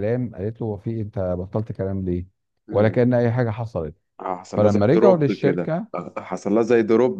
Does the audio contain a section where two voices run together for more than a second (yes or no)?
yes